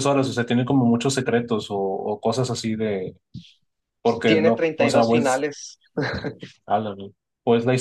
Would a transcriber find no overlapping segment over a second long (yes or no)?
no